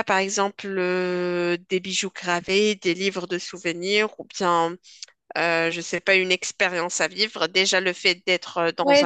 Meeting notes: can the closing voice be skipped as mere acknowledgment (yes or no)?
no